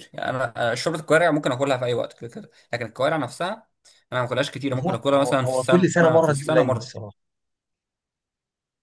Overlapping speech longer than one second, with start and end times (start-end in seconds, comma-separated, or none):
4.8-7.0